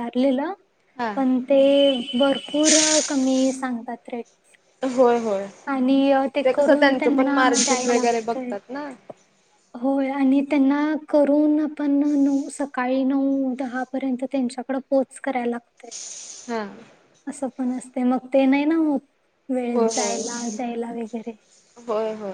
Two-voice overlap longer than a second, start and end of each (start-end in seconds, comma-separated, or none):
6.5-8.5